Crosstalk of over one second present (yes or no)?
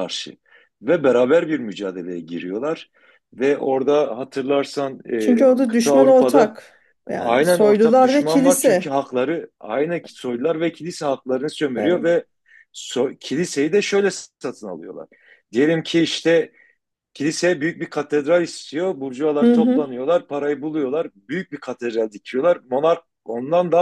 yes